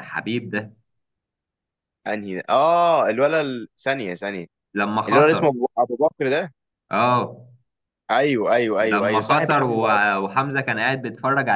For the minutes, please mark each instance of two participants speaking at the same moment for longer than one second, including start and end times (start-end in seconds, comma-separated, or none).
8.8-10.2